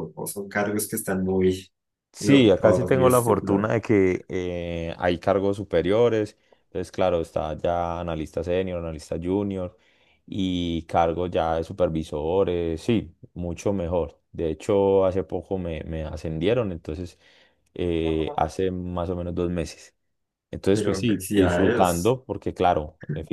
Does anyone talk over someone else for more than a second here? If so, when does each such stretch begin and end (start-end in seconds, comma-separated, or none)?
2.2-3.8, 20.7-22.1